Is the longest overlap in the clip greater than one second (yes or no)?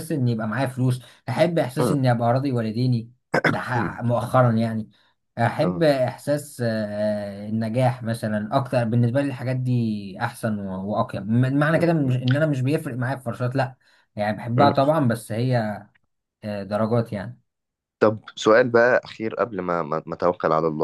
no